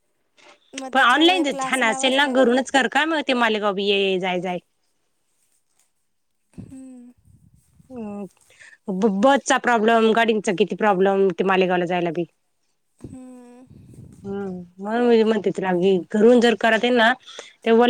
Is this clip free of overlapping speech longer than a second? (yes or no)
no